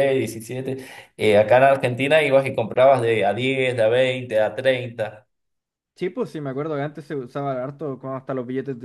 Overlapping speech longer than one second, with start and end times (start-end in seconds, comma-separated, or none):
none